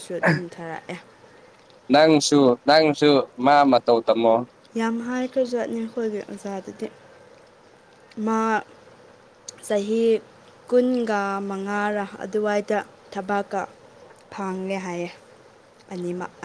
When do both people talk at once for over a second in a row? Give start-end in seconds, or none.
none